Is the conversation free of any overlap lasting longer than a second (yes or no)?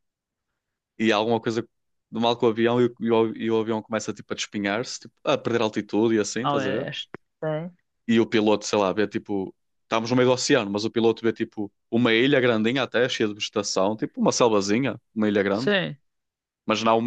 yes